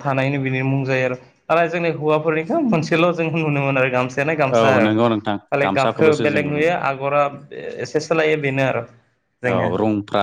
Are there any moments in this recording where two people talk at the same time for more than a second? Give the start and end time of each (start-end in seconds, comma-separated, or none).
4.6-6.8